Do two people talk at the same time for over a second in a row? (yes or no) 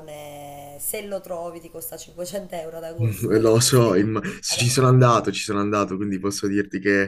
yes